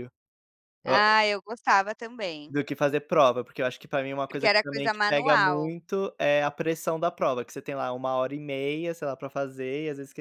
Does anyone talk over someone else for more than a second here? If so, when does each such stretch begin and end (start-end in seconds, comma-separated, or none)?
4.3-5.7